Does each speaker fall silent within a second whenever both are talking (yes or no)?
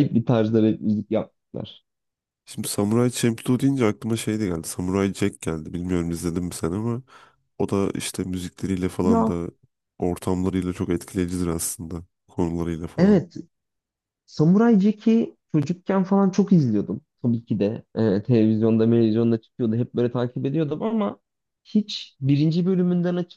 yes